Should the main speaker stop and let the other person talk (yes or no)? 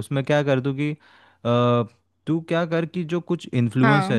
no